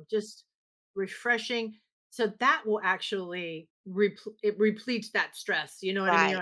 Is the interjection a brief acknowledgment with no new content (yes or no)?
yes